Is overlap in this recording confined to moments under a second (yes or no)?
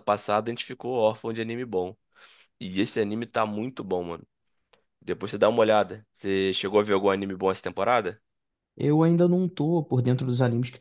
yes